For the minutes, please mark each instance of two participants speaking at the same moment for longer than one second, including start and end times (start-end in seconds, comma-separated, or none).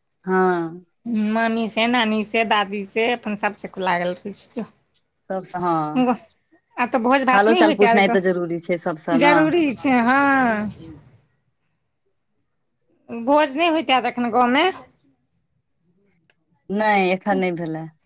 7.3-9.3